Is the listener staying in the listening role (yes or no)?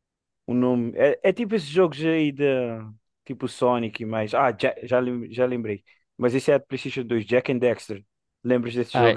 no